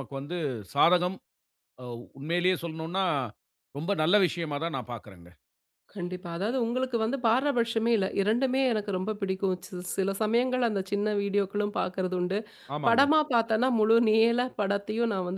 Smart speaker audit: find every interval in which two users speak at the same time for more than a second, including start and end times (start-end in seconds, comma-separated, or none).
none